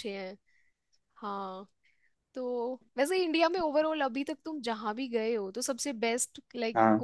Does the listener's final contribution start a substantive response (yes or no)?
no